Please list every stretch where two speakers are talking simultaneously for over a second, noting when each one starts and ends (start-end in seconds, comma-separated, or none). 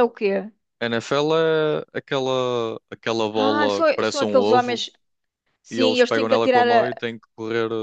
3.3-4.8, 5.7-7.0